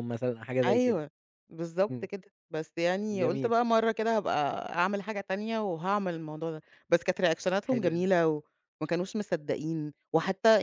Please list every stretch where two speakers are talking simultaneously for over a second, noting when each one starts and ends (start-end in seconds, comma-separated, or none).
none